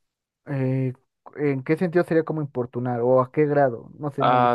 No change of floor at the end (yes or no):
no